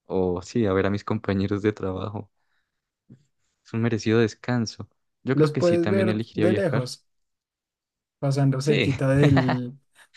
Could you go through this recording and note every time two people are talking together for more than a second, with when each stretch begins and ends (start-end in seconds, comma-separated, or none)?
5.3-6.8